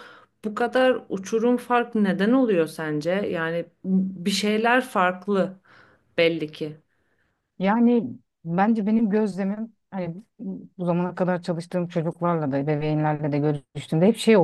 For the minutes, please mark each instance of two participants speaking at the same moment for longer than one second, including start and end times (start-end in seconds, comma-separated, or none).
none